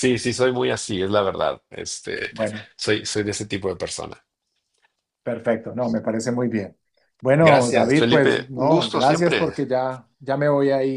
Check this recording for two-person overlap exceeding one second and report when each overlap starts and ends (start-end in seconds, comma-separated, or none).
7.4-9.5